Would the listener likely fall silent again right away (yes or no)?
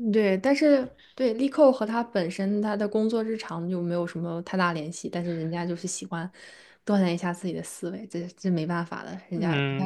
no